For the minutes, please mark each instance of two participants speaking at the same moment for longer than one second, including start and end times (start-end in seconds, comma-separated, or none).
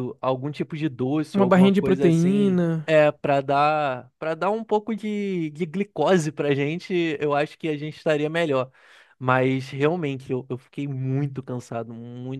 1.3-2.9